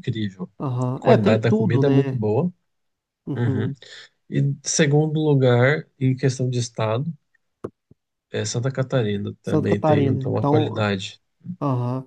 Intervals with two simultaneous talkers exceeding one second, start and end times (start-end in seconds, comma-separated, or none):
0.9-2.2, 9.4-10.9